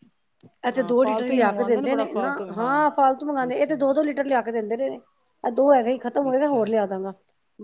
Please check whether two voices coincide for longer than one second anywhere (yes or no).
yes